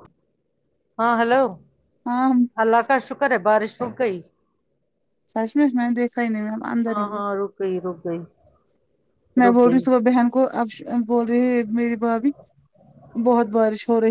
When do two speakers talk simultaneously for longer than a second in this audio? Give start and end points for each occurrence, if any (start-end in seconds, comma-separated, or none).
none